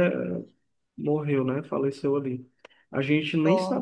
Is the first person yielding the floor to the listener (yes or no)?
no